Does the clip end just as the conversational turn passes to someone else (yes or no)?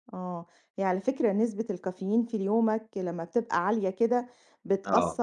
no